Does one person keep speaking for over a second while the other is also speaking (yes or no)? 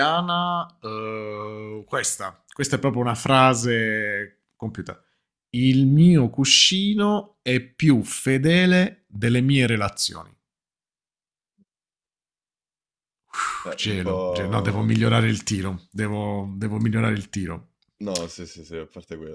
yes